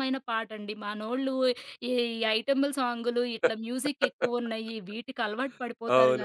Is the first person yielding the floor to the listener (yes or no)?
yes